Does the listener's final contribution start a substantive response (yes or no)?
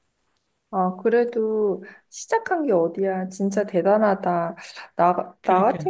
no